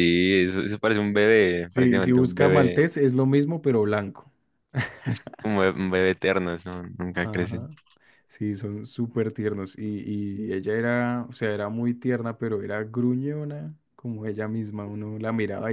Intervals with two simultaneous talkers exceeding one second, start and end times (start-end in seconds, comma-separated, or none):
1.7-2.9